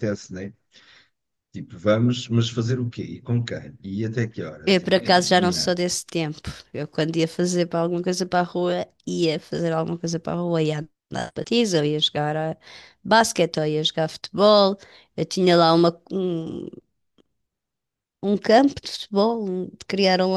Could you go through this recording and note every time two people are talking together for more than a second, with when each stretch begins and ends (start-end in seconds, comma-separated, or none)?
none